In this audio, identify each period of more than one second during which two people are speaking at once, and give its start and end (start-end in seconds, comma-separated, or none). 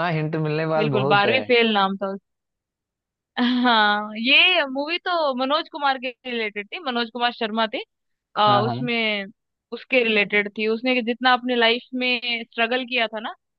none